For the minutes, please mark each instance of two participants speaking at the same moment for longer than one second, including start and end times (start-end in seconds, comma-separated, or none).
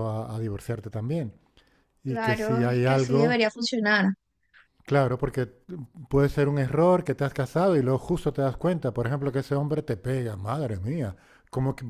2.1-3.4